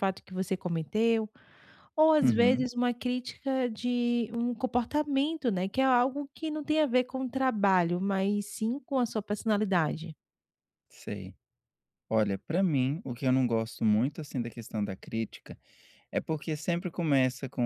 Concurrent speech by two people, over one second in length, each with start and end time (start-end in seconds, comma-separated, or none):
none